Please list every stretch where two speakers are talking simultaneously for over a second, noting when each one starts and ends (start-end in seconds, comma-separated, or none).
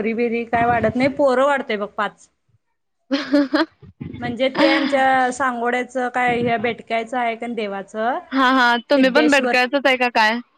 none